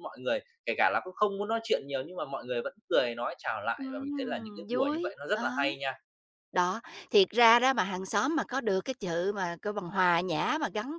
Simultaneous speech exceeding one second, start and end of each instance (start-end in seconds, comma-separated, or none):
3.8-5.4